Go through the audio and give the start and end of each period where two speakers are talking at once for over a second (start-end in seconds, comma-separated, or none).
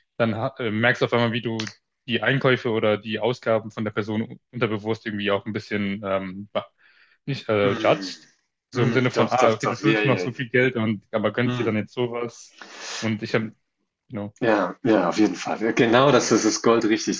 8.8-10.3